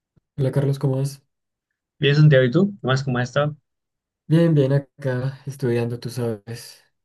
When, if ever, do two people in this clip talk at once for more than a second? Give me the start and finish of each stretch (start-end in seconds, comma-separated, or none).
none